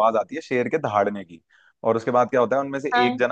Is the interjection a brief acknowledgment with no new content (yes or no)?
yes